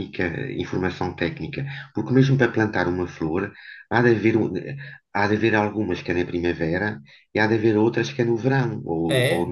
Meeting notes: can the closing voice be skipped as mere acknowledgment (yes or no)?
no